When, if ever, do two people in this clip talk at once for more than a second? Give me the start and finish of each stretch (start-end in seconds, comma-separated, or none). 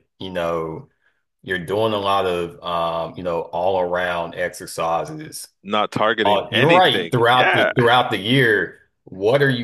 6.2-7.7